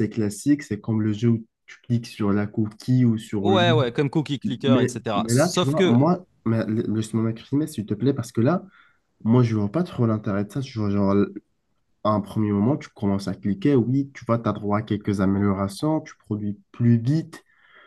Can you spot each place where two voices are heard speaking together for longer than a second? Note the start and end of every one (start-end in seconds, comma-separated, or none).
4.7-6.1